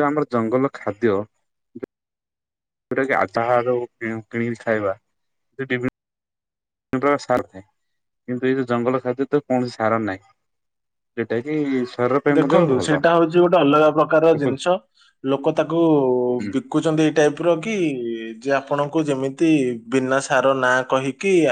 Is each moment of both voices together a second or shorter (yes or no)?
yes